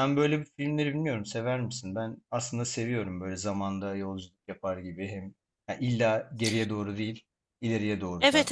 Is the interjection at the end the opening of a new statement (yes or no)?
yes